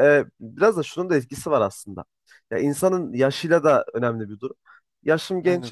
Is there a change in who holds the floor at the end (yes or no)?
no